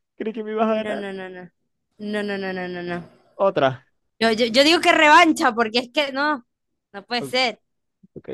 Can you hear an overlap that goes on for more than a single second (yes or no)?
no